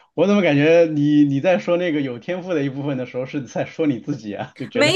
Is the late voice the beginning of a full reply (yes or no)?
yes